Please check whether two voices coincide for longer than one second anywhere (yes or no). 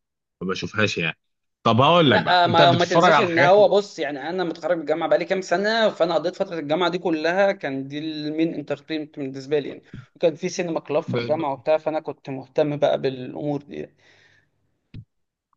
yes